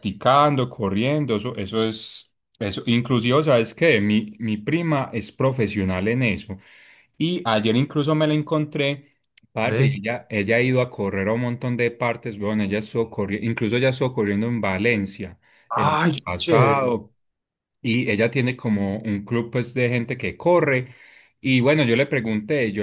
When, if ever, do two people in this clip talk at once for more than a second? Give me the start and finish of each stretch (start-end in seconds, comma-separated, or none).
15.7-16.9